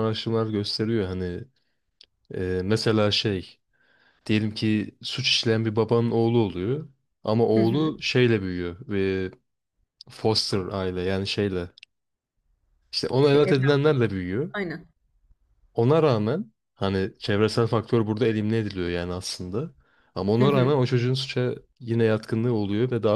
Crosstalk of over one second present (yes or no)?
no